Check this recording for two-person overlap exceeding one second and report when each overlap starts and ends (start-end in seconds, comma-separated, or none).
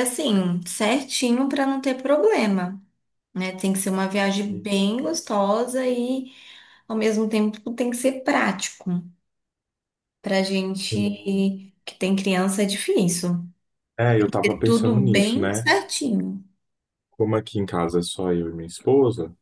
14.4-15.7